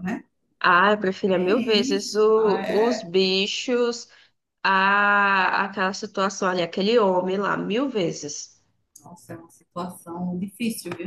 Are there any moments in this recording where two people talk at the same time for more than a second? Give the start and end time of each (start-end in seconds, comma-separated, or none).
1.3-3.1